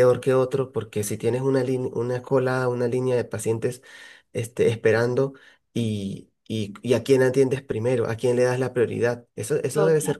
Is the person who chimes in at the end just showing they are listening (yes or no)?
no